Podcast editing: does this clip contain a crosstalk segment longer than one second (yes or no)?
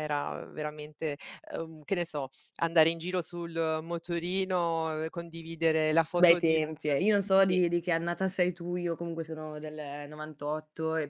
no